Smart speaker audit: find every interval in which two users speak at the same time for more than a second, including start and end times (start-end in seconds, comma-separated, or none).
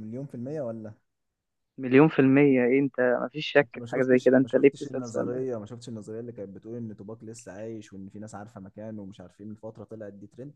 3.6-5.5